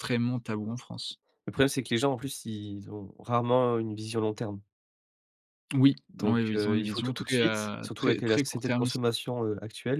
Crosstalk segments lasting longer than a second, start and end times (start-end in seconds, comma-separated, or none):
6.1-9.0